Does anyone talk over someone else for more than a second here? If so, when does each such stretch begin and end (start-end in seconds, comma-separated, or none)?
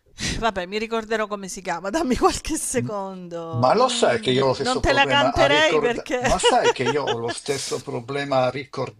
3.5-6.2